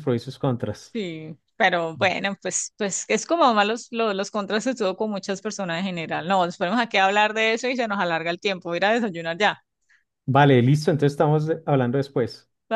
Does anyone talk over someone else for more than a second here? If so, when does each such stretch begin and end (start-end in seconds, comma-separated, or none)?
none